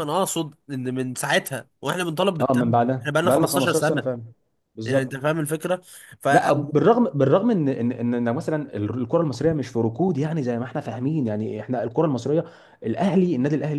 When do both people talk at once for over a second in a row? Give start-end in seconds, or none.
2.4-4.0